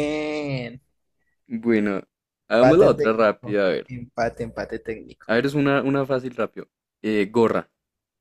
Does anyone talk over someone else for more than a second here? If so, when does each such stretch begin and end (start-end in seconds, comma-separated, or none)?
2.6-3.9